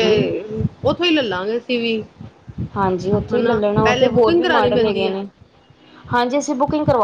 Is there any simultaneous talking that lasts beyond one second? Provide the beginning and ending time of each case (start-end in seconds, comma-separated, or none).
3.4-5.2